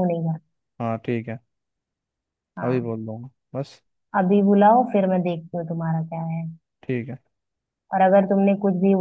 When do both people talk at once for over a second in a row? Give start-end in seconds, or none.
none